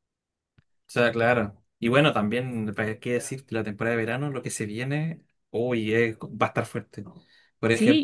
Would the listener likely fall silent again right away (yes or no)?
no